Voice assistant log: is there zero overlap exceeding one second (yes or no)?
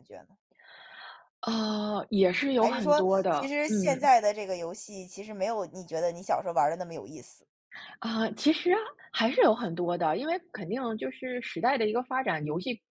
no